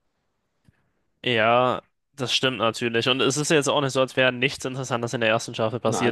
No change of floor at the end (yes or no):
yes